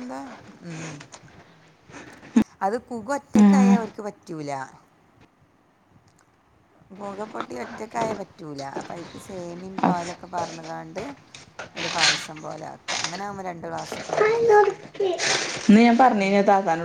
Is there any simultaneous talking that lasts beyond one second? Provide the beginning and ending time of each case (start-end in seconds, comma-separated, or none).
none